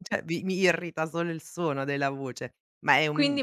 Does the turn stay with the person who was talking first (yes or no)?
no